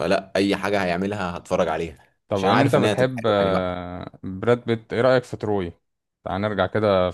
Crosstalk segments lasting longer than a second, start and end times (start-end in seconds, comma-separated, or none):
2.3-3.8